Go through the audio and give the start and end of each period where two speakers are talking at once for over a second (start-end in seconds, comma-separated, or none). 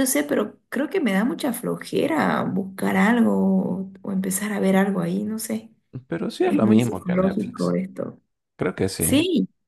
6.4-7.8